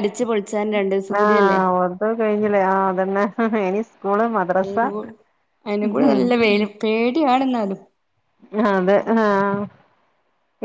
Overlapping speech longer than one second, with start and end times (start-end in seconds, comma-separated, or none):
none